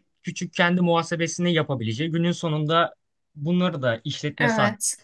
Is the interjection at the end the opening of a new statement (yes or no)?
no